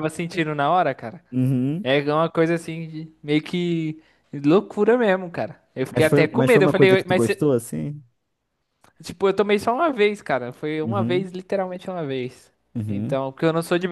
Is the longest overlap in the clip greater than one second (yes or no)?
yes